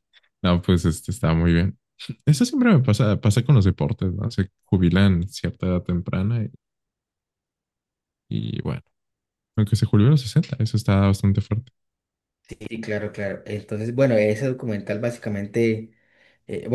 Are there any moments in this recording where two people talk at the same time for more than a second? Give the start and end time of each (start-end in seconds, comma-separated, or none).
none